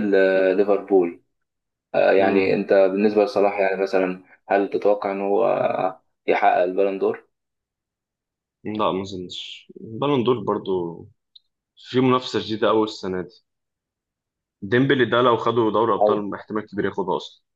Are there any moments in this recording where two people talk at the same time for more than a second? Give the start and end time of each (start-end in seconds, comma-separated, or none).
none